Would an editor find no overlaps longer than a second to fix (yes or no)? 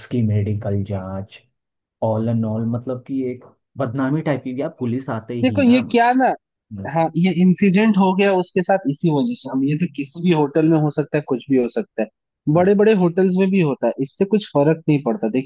yes